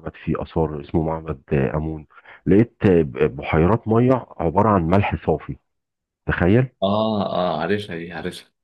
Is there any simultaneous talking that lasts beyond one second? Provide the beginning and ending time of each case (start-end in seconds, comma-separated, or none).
none